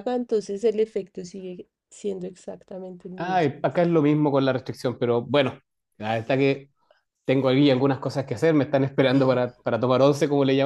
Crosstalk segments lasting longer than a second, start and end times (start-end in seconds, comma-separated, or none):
none